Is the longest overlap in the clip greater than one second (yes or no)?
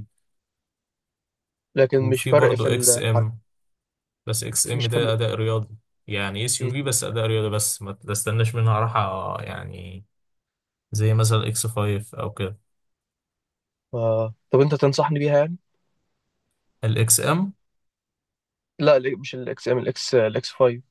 yes